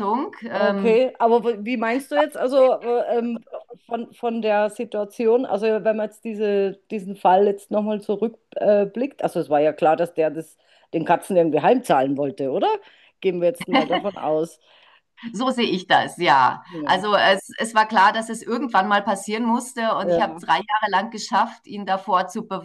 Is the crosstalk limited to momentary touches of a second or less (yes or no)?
yes